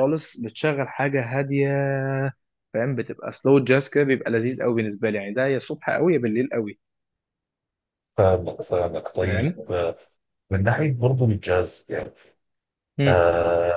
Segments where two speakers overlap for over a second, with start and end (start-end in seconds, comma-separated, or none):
none